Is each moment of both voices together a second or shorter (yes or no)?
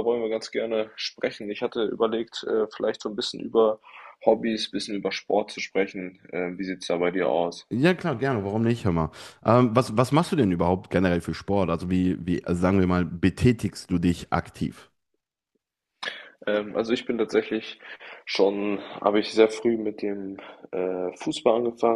yes